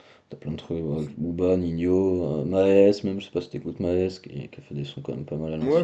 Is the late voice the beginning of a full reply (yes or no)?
yes